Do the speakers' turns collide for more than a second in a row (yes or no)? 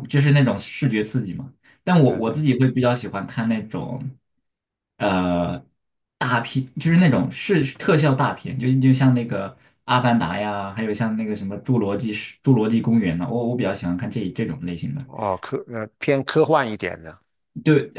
no